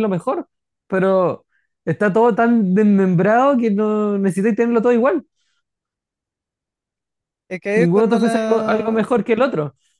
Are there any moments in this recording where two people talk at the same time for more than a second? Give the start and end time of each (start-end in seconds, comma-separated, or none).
7.7-9.1